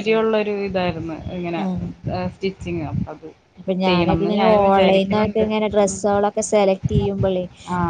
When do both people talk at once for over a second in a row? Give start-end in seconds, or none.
3.9-5.5